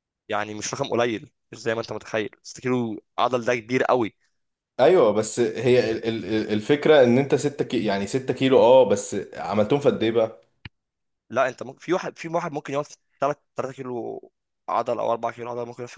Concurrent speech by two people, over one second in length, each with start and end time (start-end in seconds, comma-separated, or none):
none